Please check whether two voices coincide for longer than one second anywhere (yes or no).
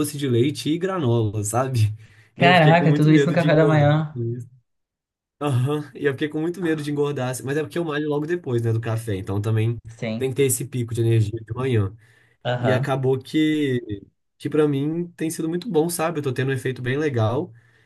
yes